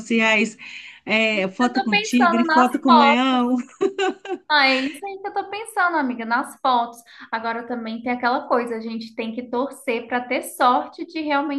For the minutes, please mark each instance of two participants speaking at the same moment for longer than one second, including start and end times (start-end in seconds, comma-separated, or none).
1.6-3.4